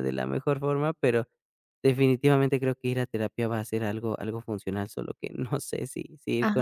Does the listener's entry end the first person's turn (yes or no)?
yes